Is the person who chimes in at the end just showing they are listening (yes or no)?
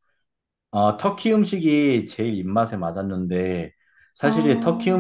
yes